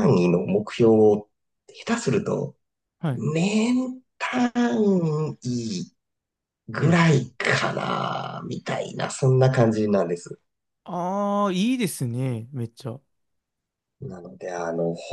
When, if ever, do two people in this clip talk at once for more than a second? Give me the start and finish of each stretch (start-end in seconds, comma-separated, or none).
none